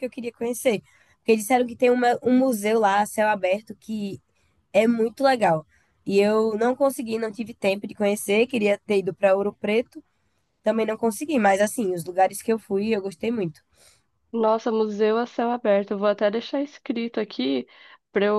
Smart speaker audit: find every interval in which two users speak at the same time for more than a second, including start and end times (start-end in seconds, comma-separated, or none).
none